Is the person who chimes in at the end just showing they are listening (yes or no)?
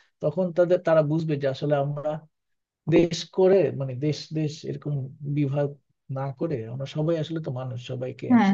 no